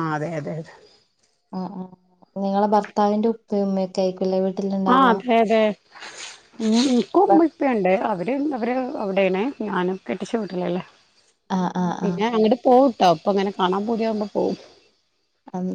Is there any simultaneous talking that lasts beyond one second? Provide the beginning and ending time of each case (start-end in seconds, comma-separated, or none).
none